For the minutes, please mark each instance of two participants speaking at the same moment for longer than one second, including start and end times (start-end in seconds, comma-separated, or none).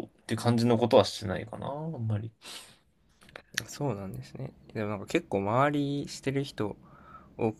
none